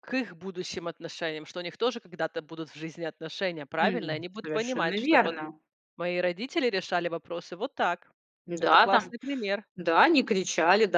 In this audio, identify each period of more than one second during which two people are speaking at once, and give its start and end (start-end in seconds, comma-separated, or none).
3.8-5.4